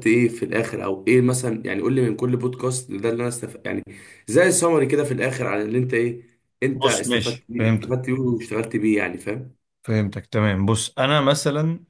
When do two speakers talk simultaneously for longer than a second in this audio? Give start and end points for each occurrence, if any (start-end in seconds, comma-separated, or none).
6.8-8.1